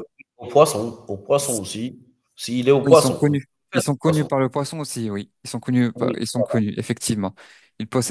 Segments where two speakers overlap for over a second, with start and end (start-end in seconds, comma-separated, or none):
2.8-4.3